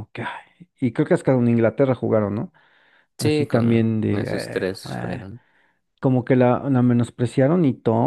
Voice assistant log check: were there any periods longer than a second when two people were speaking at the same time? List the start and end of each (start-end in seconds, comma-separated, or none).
3.2-5.3